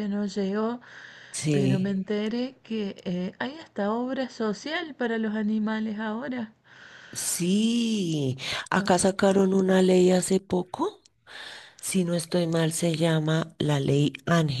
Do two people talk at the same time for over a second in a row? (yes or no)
no